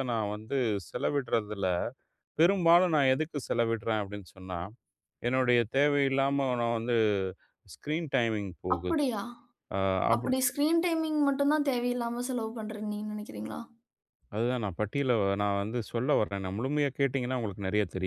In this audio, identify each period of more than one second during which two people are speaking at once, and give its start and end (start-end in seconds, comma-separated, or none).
none